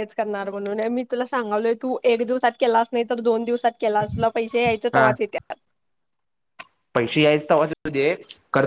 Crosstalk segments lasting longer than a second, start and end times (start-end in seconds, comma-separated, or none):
none